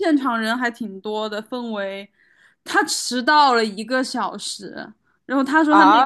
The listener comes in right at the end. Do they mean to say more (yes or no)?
yes